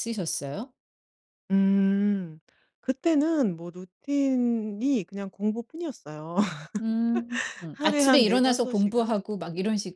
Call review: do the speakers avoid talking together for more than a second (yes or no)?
no